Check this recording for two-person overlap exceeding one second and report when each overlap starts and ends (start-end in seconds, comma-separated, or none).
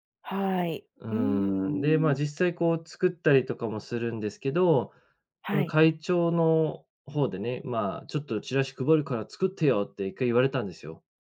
1.0-2.2